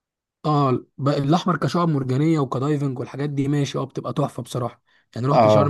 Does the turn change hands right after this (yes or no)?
no